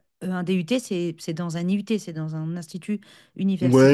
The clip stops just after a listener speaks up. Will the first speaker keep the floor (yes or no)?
no